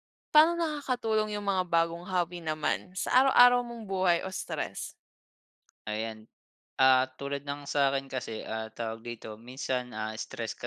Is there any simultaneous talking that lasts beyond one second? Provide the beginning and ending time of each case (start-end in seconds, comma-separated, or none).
none